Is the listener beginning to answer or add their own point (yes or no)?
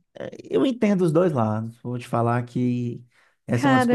yes